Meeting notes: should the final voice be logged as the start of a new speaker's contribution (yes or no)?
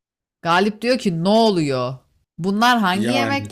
no